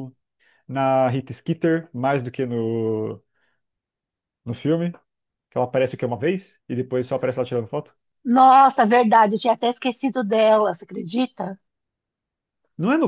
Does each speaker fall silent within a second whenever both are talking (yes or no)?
yes